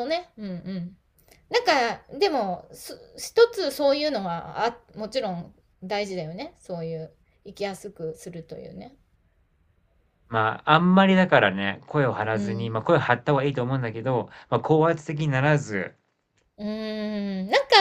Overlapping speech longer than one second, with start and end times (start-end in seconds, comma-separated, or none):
none